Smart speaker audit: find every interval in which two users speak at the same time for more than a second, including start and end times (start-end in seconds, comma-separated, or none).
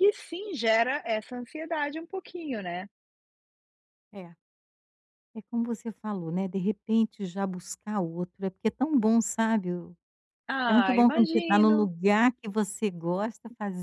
10.7-11.9